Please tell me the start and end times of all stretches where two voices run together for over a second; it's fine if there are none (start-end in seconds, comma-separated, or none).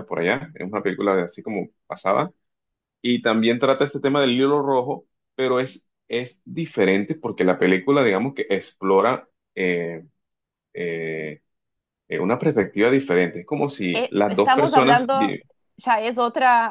13.9-15.4